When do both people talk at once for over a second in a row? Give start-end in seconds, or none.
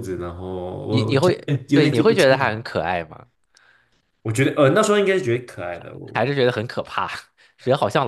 0.9-2.5